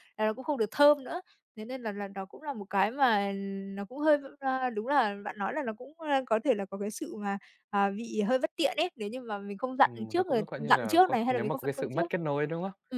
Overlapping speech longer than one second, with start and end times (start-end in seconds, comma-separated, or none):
9.8-12.1